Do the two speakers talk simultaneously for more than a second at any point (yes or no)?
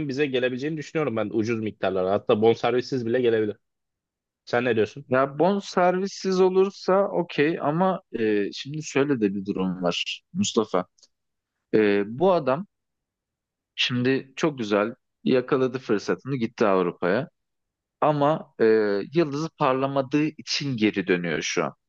no